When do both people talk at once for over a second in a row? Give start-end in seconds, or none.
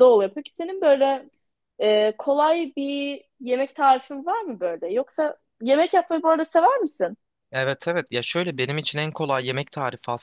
none